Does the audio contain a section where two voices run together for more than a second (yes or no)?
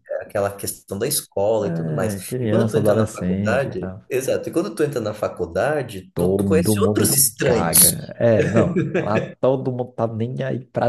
yes